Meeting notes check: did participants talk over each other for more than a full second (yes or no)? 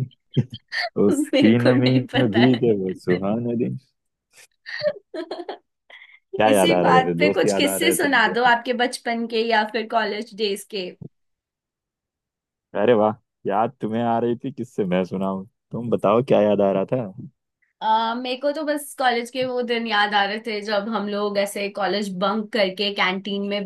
yes